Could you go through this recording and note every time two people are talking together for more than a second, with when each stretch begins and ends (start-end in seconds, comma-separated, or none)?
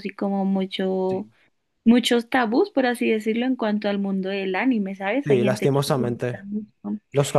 5.2-6.4